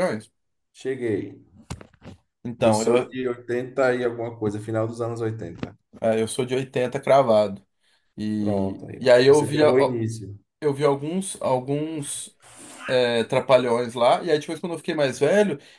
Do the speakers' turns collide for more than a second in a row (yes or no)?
yes